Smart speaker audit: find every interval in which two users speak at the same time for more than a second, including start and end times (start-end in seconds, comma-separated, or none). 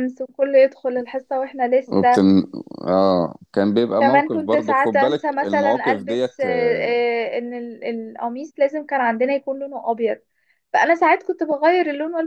4.0-6.5